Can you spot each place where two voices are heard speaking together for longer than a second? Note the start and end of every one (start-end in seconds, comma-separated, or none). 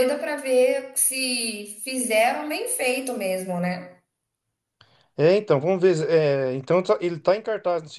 none